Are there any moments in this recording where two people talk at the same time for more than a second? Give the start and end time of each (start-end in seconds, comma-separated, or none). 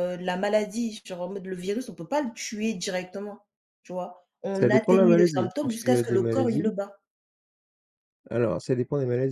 4.5-6.7